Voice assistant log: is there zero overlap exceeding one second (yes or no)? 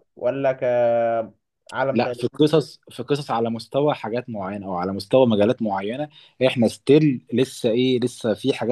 yes